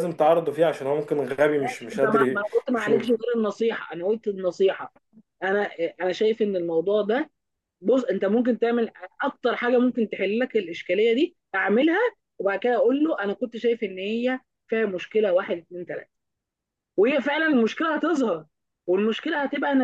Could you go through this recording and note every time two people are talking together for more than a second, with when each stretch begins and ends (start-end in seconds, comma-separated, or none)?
1.6-3.2